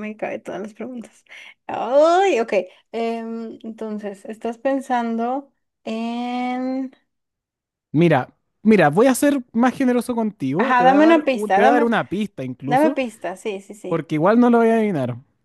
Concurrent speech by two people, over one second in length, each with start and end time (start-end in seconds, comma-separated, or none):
10.6-11.9